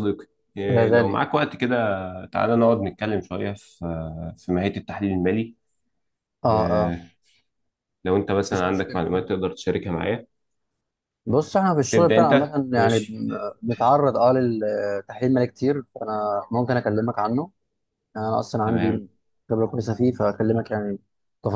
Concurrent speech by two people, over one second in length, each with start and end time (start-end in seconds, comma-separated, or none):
11.9-13.2